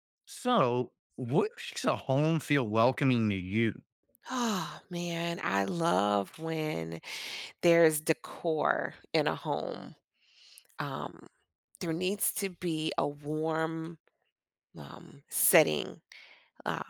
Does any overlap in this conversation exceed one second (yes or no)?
no